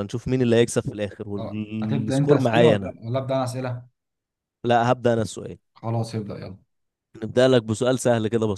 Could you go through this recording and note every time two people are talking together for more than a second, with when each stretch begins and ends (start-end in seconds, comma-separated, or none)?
1.4-2.9